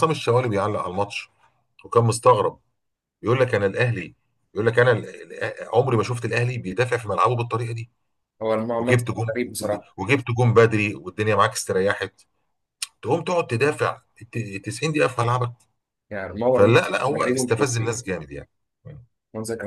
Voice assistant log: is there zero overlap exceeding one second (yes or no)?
no